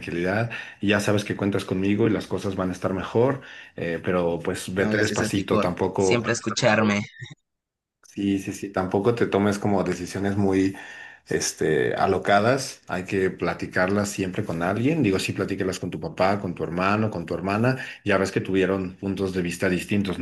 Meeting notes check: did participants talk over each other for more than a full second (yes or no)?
yes